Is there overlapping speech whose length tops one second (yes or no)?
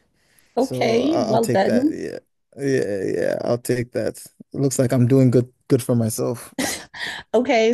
yes